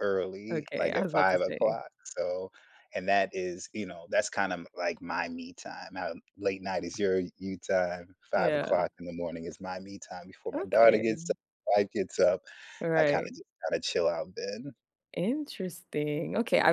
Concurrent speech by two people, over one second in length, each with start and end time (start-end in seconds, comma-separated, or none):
0.5-1.8